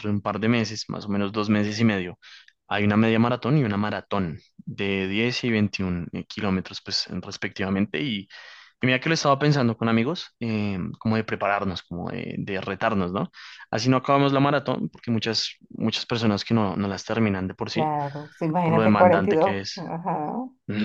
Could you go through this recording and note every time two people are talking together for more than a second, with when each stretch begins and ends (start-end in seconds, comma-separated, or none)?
18.6-19.8